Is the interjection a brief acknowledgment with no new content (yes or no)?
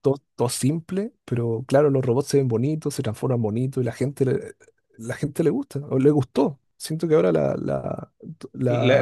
no